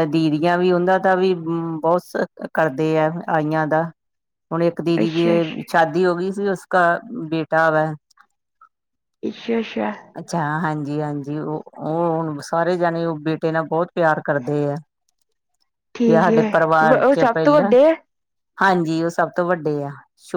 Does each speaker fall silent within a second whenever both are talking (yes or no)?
no